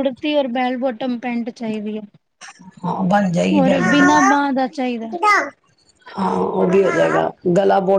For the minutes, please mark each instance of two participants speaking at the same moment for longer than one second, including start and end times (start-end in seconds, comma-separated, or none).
3.6-5.1